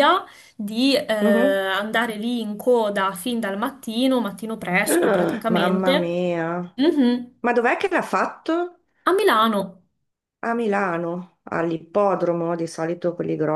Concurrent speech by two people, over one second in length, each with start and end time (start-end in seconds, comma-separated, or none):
4.9-6.2